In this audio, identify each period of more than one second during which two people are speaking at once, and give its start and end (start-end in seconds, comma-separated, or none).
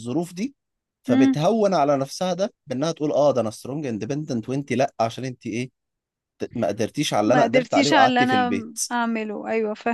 7.2-8.8